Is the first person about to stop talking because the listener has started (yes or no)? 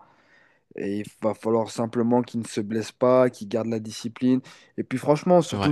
no